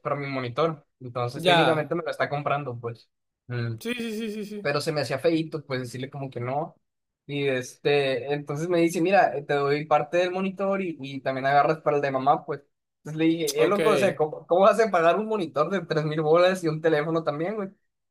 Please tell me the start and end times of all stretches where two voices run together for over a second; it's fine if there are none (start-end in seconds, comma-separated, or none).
none